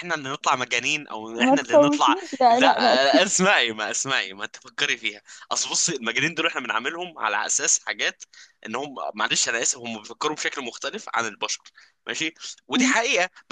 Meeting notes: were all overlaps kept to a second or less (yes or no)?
no